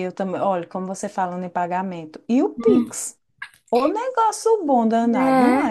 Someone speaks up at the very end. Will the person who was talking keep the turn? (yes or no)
no